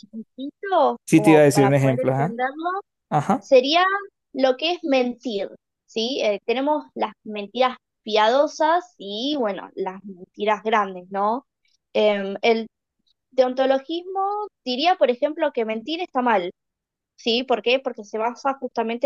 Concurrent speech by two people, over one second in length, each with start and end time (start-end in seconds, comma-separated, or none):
1.1-2.4